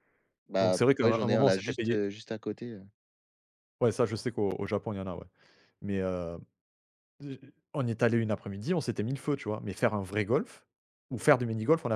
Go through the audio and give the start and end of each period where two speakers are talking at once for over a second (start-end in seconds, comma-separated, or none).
0.6-2.0